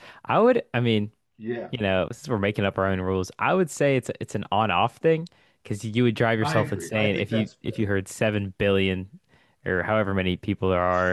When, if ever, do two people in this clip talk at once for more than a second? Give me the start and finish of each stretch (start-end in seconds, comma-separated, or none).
6.4-7.9